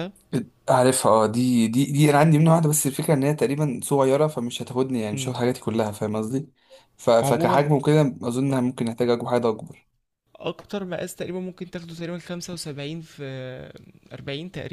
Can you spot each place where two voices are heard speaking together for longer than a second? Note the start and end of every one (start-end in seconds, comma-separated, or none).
none